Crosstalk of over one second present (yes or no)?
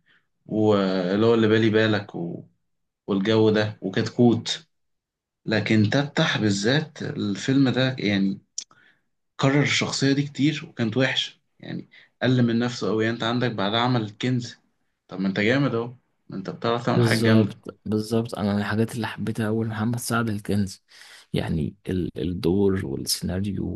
no